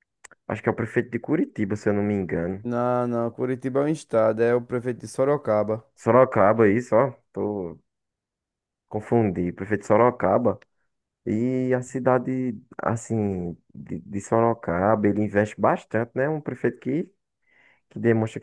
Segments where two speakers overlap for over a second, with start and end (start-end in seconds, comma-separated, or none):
none